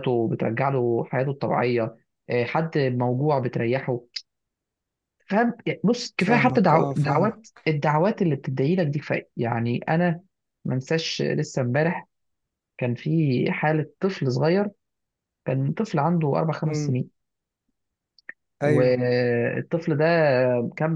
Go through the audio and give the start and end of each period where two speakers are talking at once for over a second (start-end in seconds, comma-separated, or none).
6.2-7.7